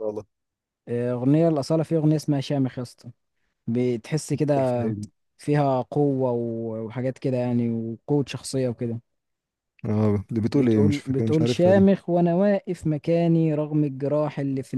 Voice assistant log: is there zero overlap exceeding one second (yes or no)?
no